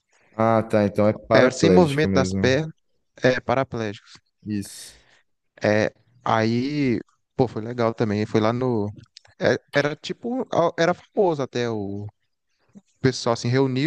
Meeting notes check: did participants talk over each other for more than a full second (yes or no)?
yes